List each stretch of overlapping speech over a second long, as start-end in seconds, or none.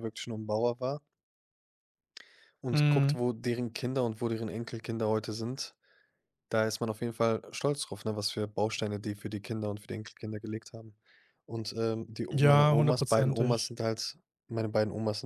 12.3-13.7